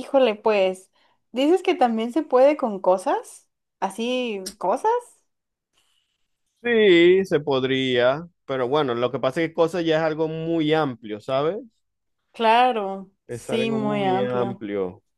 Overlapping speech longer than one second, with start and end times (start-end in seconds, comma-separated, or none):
13.3-14.6